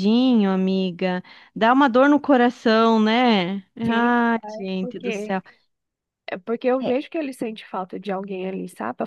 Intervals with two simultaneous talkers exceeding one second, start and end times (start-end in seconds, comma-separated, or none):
3.8-5.4